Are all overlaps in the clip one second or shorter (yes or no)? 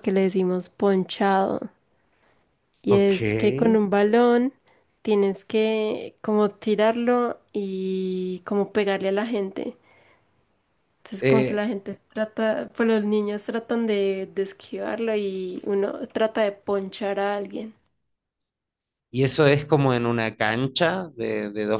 yes